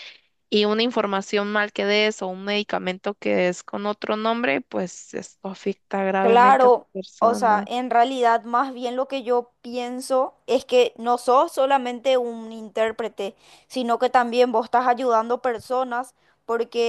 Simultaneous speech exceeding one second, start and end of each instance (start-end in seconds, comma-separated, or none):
6.2-7.7